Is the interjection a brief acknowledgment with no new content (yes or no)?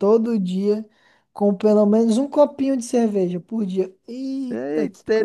no